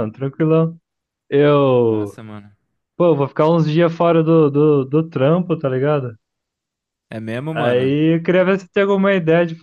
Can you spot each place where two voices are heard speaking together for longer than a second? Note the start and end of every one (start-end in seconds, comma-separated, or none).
none